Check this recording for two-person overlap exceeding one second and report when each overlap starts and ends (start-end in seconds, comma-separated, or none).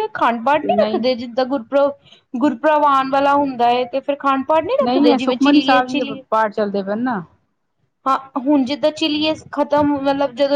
4.8-6.2